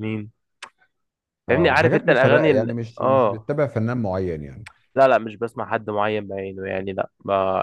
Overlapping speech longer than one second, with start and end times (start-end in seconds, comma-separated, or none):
1.5-3.5